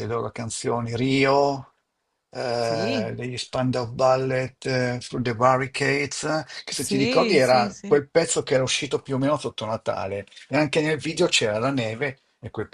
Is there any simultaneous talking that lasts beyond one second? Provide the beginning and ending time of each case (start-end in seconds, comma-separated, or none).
6.7-8.0